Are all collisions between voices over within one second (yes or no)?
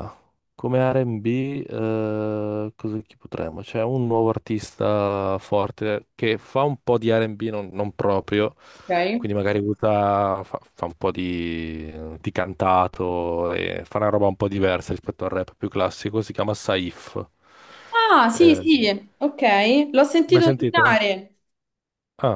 yes